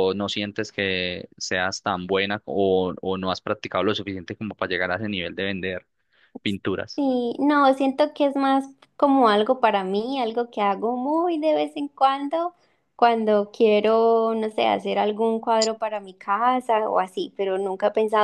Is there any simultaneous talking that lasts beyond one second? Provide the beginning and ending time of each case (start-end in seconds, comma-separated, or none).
none